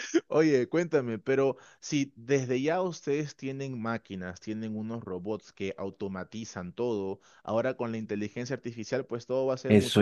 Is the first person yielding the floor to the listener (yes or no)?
yes